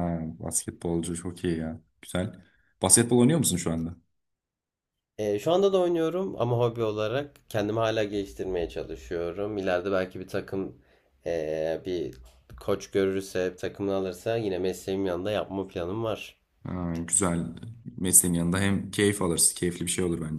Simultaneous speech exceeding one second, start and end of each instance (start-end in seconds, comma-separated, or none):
none